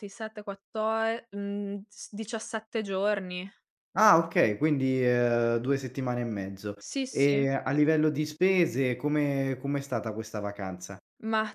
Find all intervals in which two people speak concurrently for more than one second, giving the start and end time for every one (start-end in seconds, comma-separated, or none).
none